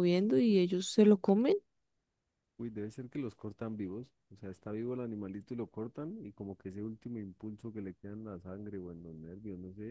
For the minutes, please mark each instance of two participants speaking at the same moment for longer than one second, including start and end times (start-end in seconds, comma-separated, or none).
none